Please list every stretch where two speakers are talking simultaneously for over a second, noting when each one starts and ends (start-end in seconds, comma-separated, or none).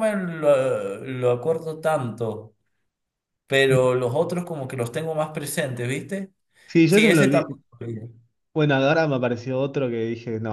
none